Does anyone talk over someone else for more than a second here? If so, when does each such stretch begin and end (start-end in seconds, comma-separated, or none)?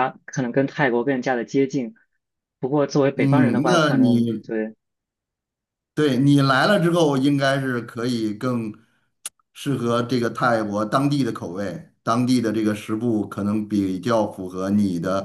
3.1-4.4